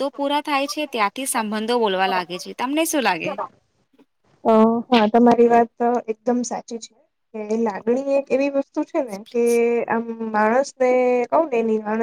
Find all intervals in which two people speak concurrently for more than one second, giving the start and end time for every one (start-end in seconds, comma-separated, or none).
none